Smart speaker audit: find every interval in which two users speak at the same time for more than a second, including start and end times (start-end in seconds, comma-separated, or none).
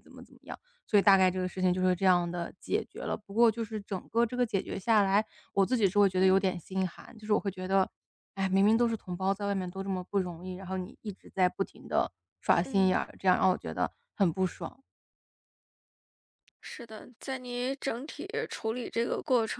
none